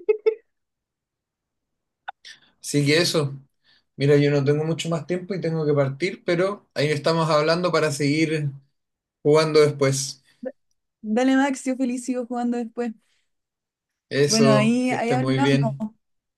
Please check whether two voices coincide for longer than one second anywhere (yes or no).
yes